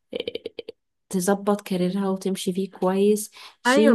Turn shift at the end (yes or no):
yes